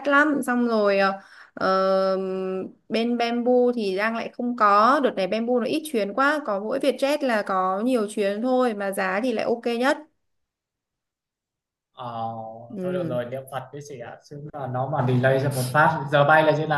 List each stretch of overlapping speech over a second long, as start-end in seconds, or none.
none